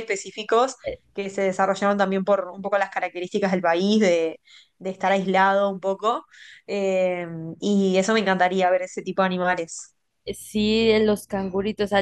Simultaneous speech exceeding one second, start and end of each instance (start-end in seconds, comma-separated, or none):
none